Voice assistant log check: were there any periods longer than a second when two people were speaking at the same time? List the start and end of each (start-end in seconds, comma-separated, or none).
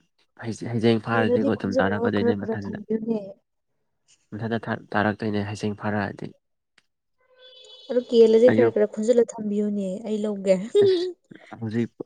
1.1-2.8